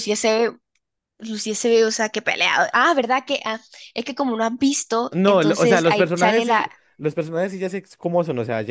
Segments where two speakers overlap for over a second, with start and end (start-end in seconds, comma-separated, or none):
5.1-6.7